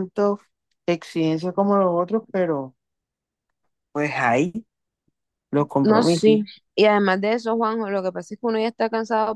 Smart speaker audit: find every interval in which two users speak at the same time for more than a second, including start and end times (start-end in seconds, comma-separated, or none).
none